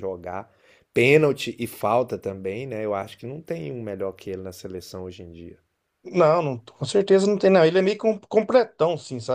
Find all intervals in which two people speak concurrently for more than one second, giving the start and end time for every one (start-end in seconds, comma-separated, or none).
none